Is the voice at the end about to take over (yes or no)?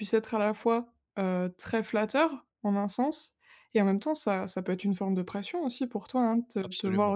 no